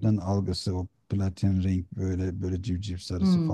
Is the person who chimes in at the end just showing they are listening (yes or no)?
no